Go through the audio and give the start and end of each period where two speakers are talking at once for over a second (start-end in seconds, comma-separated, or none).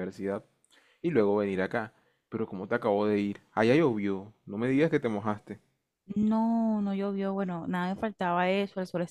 none